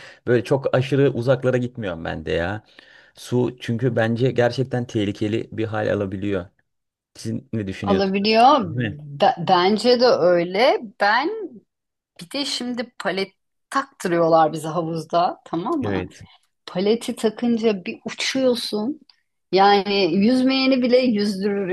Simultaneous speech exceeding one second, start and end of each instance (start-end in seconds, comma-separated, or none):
none